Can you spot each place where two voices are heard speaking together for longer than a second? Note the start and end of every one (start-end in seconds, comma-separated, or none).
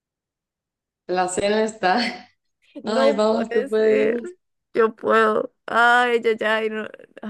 2.8-4.2